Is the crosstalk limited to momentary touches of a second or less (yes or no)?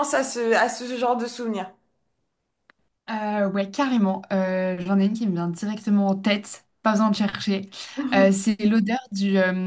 yes